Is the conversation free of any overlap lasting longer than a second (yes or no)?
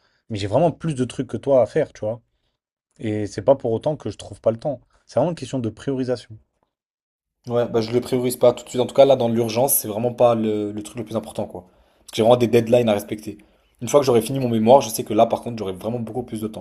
yes